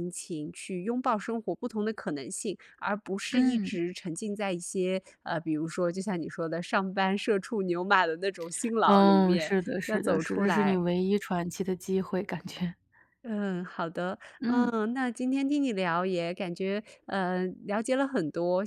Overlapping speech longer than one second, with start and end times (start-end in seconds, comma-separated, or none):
8.8-10.9